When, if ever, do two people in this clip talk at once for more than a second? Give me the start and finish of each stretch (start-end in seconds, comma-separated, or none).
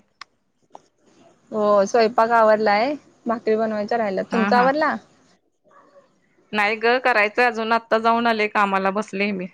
none